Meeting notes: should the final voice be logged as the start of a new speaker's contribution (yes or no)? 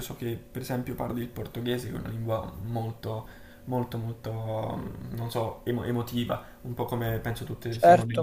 yes